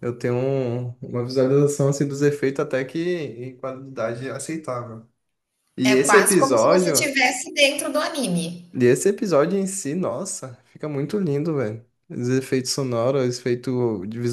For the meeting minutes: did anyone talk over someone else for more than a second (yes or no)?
yes